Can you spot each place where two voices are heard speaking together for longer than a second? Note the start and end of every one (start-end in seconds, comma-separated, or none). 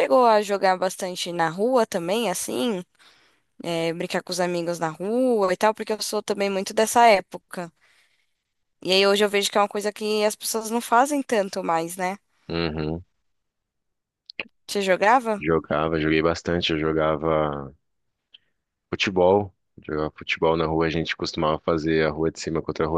none